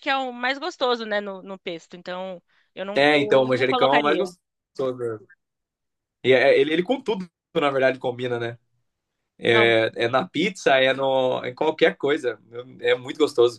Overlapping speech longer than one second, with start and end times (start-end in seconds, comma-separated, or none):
3.0-4.2